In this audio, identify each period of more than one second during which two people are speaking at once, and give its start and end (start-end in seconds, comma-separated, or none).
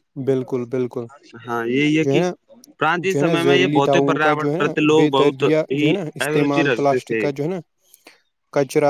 3.1-7.2